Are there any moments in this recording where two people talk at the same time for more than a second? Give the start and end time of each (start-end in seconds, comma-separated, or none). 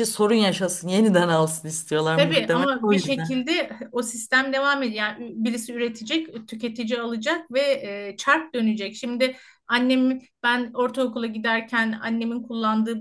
2.1-3.4